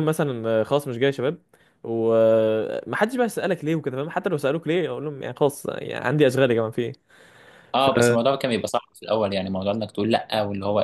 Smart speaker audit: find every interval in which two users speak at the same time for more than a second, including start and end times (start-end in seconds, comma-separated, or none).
none